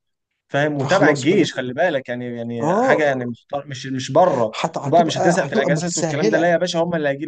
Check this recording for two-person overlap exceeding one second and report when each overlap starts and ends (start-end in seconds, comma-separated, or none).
4.6-6.6